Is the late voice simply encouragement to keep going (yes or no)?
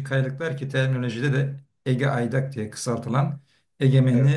yes